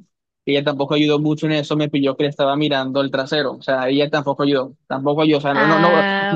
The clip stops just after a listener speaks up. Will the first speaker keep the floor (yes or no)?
yes